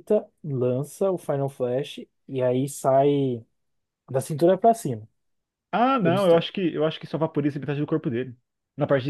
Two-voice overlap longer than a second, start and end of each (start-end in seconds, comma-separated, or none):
none